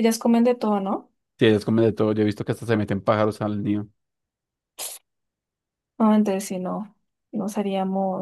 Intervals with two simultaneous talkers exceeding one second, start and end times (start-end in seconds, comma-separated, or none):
none